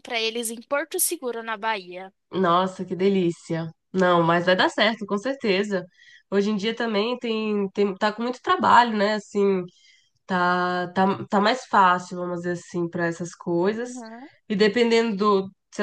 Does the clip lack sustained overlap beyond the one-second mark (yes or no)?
yes